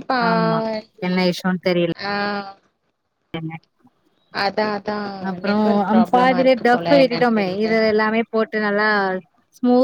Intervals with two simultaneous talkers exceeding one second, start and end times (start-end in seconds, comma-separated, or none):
5.5-7.7